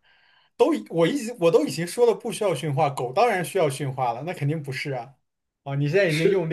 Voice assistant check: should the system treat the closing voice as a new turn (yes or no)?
no